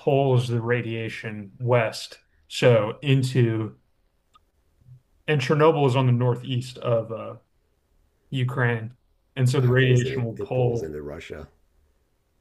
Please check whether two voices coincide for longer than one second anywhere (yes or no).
yes